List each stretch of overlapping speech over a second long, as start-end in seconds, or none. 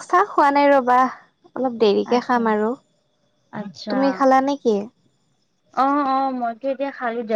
none